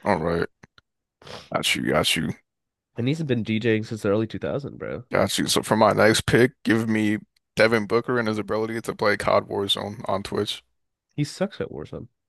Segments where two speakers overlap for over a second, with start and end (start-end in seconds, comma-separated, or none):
none